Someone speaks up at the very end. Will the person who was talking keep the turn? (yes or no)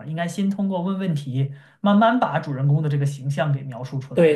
no